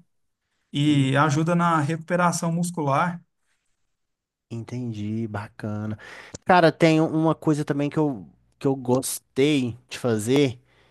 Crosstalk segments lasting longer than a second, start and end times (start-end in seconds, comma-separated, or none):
none